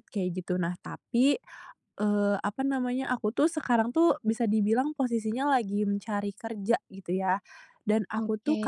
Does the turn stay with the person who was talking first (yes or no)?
yes